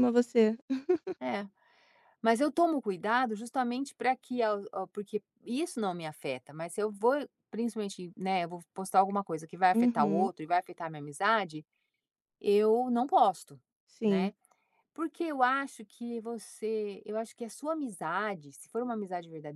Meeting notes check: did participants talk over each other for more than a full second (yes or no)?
no